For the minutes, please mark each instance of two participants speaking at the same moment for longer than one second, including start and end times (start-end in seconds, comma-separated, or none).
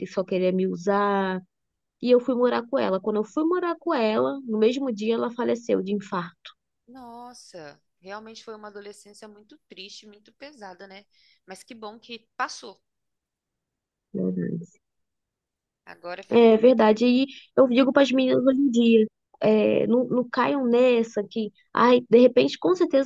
none